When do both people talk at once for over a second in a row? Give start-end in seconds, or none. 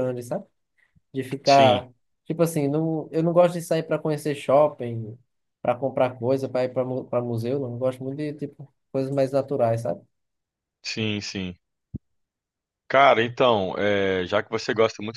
none